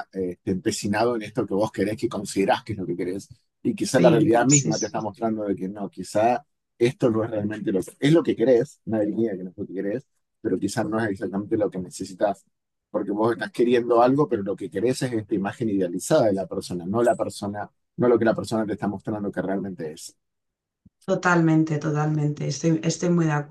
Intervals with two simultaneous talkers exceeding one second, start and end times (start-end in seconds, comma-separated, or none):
3.8-5.1